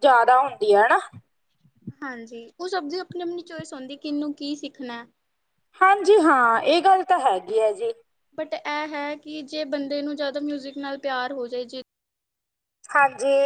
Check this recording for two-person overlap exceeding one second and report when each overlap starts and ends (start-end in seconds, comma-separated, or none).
none